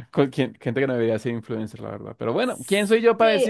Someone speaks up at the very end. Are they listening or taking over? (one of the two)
taking over